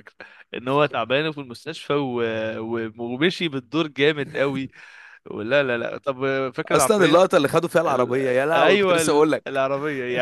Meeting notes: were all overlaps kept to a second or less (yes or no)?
no